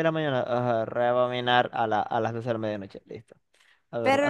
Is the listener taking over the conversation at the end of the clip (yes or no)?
yes